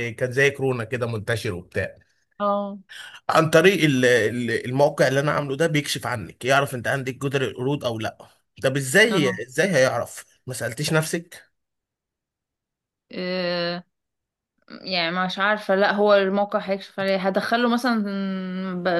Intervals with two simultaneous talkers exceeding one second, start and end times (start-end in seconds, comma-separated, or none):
none